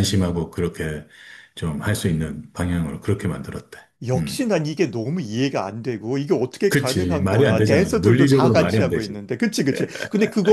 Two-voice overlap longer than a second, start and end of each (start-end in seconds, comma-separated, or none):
6.7-9.2